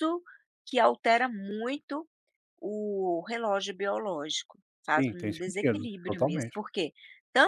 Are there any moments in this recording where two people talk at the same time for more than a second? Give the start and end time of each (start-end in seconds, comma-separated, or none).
4.9-6.6